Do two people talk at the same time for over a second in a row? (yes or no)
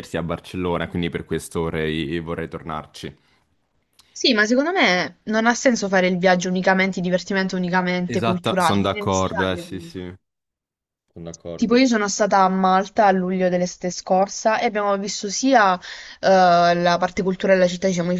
yes